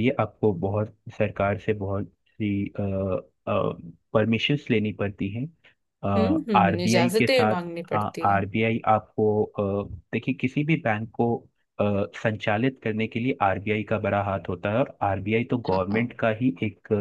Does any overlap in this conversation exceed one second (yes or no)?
yes